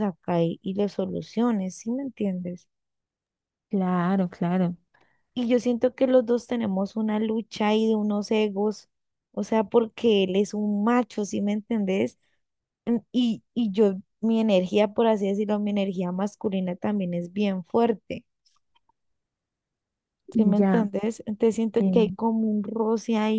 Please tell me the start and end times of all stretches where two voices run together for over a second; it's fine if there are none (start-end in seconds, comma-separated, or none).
none